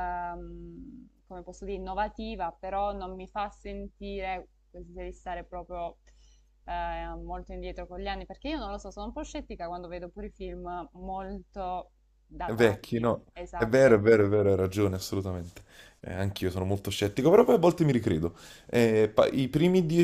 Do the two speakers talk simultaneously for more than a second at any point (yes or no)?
yes